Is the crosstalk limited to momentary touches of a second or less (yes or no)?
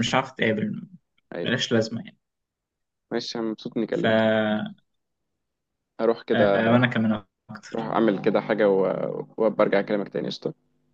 yes